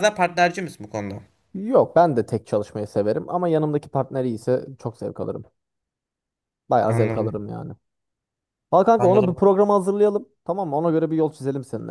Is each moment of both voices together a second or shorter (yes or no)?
yes